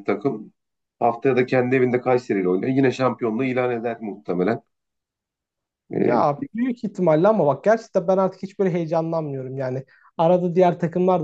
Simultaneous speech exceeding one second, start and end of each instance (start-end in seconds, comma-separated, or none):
none